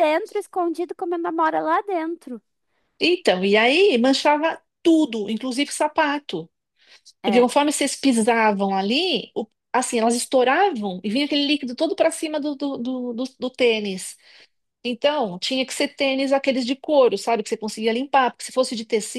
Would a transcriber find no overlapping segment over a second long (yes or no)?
yes